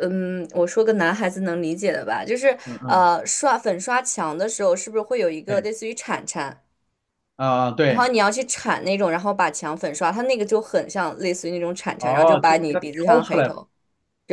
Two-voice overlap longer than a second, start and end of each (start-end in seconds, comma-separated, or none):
12.0-13.5